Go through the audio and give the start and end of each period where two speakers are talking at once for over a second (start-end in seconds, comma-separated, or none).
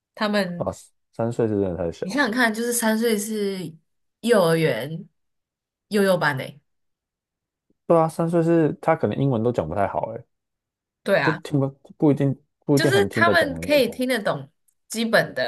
12.7-14.1